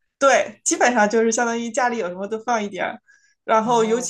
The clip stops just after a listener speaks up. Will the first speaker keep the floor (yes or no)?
yes